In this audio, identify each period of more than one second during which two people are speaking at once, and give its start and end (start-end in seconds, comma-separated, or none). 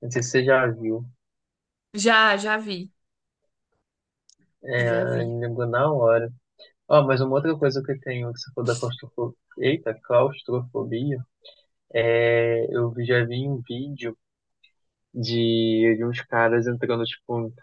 none